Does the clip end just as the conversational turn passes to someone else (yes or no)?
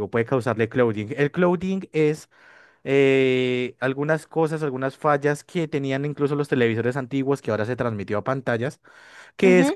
no